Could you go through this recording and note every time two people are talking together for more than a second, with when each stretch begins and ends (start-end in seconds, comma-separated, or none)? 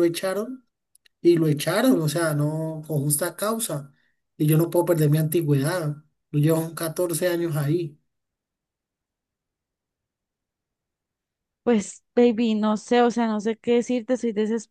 none